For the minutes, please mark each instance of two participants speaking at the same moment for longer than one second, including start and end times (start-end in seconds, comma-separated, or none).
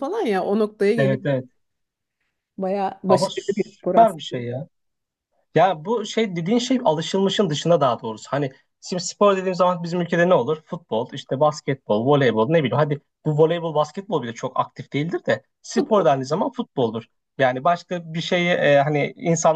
3.1-4.5